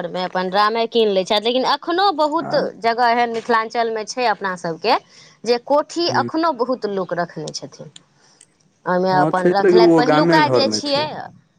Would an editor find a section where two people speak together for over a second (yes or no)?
yes